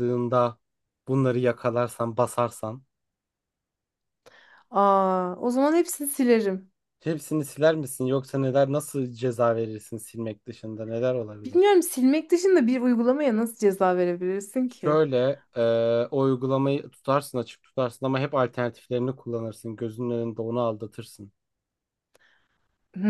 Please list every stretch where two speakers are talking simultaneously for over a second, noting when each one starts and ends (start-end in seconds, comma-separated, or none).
none